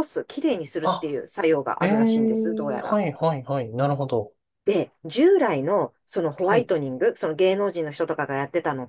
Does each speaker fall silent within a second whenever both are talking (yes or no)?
no